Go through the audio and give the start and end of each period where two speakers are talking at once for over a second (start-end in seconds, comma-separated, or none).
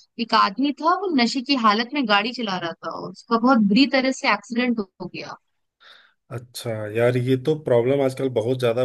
none